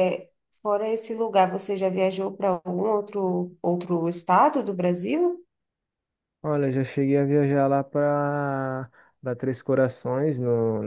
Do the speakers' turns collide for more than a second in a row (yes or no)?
no